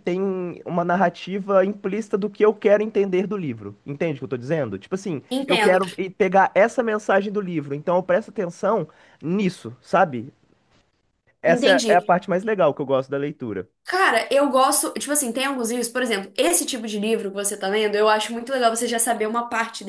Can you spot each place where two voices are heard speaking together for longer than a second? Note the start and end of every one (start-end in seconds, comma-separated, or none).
none